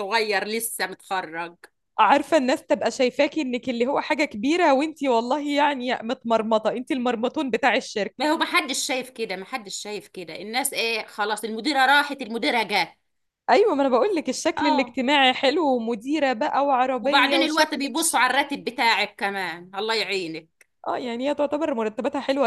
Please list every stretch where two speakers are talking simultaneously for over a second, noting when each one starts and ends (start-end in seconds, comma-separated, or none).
17.0-18.4